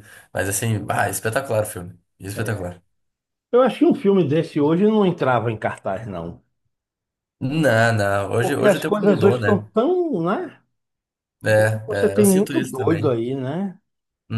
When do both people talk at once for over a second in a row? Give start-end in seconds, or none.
8.4-9.7, 11.5-13.2